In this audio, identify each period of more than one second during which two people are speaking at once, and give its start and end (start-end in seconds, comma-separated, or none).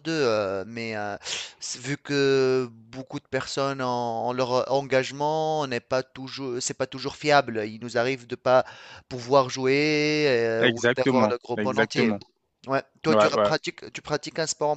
10.6-12.1